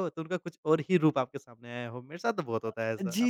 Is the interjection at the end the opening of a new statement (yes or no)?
yes